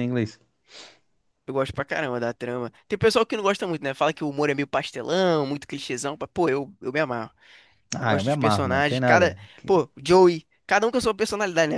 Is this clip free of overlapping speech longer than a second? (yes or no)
no